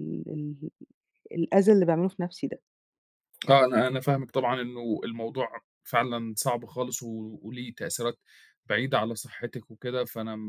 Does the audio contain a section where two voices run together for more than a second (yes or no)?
no